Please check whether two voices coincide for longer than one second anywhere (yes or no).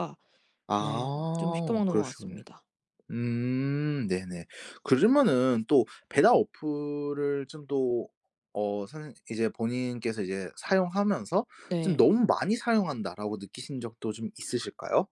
yes